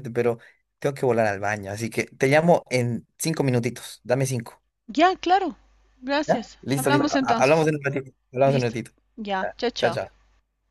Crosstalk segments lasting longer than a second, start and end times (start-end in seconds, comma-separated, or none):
6.3-7.7